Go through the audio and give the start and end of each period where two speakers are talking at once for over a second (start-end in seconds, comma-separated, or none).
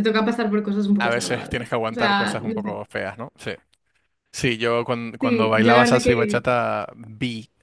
1.0-2.8, 5.2-6.4